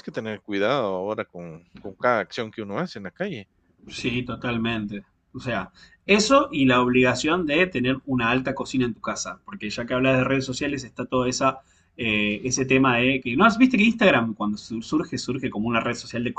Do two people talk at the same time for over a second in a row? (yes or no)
no